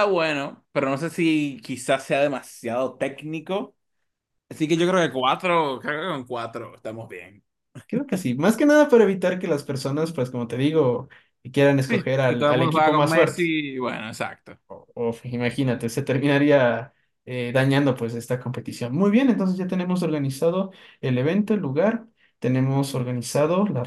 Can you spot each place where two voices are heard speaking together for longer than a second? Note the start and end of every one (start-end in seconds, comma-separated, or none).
11.8-13.4